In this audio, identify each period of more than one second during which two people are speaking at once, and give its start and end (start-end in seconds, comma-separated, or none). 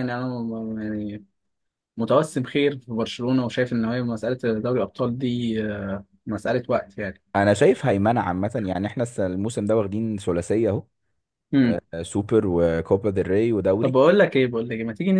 none